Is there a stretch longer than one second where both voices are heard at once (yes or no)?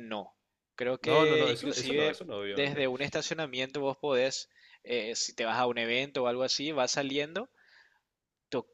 yes